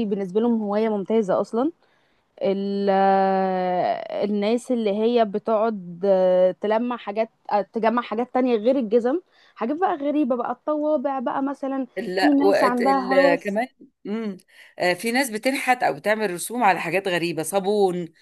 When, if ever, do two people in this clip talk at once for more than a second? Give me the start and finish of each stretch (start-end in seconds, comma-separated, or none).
12.0-13.6